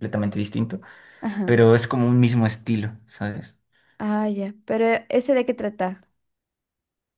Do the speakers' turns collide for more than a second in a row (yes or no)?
no